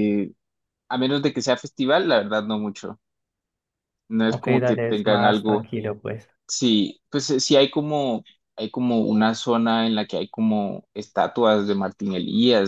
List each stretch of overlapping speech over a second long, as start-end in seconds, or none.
4.2-5.7